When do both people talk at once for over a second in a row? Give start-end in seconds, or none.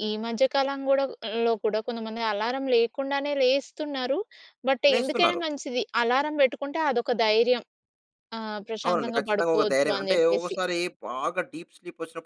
8.9-10.5